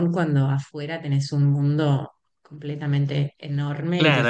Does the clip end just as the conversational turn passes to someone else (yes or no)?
yes